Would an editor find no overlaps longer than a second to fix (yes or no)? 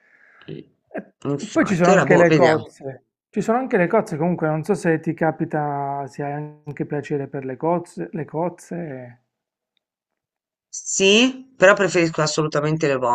no